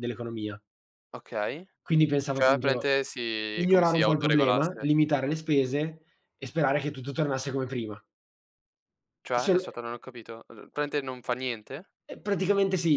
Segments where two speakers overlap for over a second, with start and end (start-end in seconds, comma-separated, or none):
3.5-4.9